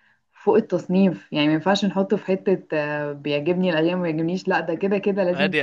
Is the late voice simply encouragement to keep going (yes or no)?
no